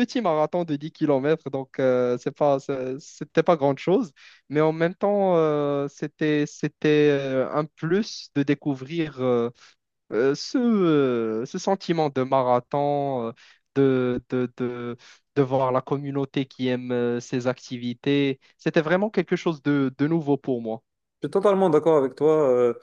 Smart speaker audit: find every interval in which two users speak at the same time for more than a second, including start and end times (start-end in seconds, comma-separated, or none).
none